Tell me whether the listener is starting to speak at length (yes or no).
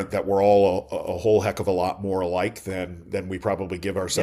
yes